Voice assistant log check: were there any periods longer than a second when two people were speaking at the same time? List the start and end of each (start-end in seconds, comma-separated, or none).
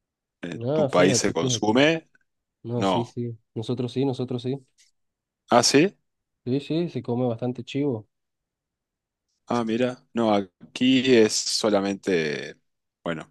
0.5-1.8